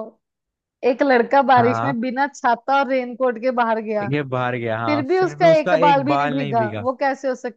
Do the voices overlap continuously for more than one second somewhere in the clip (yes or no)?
yes